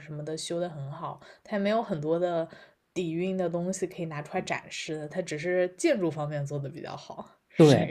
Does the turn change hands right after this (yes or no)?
yes